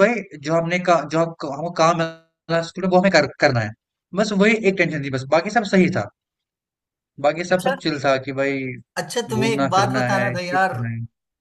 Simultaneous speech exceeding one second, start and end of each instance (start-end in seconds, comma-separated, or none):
9.3-10.8